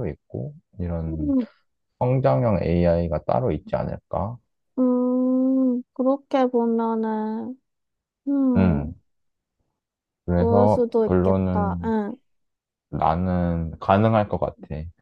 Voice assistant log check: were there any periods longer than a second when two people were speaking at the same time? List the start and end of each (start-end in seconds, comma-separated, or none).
10.3-11.9